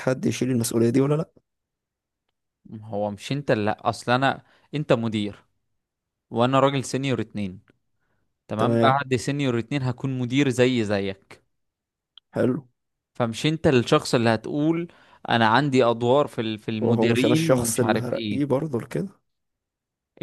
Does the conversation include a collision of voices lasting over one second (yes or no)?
yes